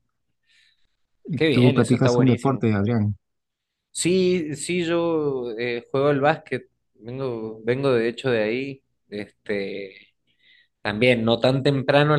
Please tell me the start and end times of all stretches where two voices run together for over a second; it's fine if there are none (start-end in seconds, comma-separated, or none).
1.4-2.6